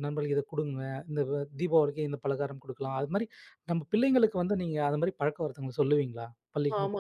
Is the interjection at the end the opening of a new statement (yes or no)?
yes